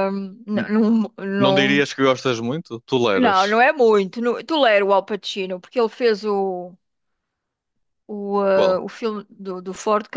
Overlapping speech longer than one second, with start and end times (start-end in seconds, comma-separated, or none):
none